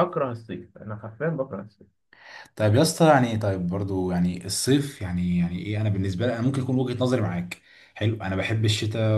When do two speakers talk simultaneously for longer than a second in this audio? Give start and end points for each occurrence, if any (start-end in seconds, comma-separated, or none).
none